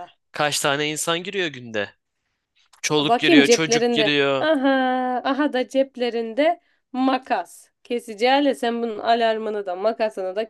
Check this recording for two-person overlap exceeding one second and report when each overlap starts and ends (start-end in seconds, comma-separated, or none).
3.0-4.5